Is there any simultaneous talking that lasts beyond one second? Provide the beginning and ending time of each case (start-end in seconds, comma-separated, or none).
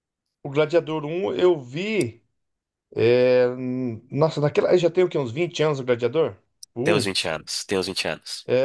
none